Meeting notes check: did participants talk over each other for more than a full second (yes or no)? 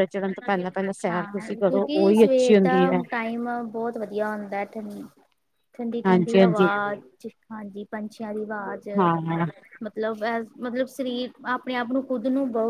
yes